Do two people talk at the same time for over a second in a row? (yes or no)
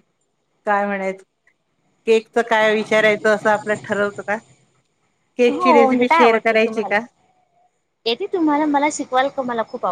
yes